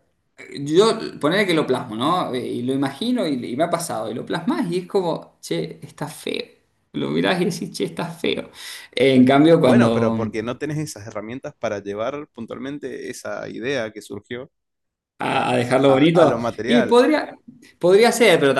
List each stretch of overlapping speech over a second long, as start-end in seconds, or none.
15.3-17.0